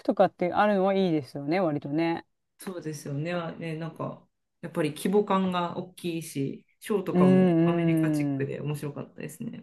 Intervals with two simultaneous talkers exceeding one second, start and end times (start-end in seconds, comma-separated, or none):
7.1-8.5